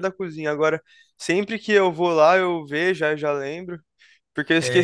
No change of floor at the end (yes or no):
yes